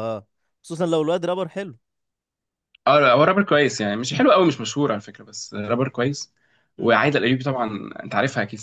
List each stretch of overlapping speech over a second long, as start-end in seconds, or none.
none